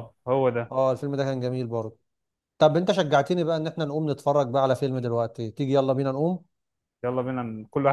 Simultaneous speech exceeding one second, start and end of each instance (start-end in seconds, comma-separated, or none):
none